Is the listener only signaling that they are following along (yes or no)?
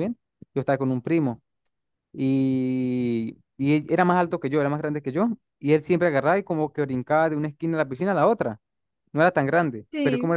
yes